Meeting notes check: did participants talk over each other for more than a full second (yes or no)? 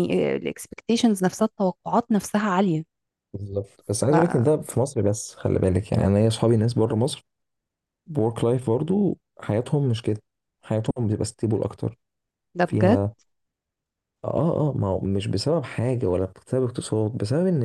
no